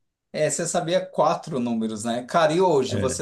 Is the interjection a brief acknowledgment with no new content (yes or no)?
yes